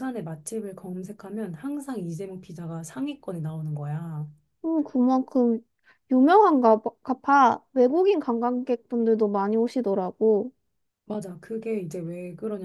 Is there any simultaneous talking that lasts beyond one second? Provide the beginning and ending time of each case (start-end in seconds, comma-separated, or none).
none